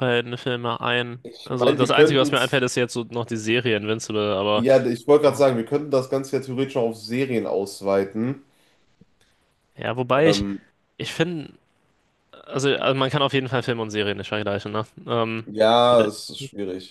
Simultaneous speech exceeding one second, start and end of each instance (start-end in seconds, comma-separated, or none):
1.2-2.6